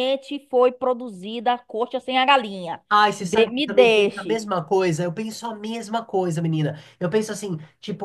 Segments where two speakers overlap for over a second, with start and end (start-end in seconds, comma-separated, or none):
3.2-4.5